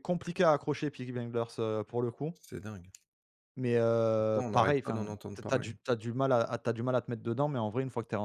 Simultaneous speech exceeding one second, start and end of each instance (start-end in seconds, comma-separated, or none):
4.2-5.7